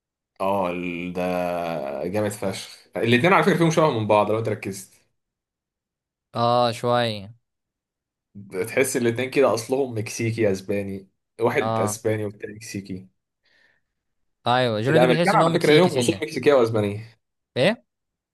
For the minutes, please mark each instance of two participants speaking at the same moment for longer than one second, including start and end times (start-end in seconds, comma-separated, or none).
14.9-16.2